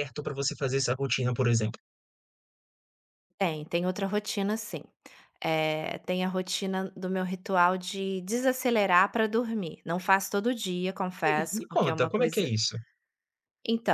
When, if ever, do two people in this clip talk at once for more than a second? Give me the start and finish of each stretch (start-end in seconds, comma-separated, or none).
11.2-12.5